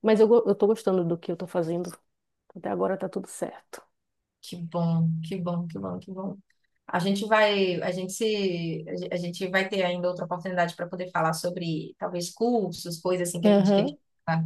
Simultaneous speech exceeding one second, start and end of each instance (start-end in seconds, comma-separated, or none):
none